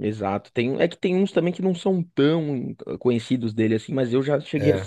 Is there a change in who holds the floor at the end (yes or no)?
no